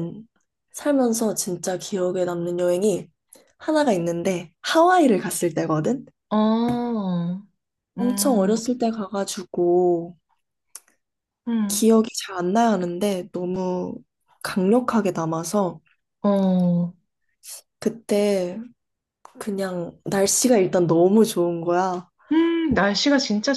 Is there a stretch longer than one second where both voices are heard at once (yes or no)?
no